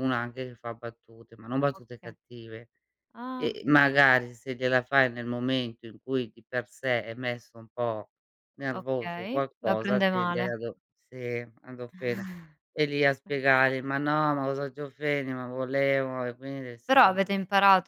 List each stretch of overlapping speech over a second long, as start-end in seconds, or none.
8.7-10.5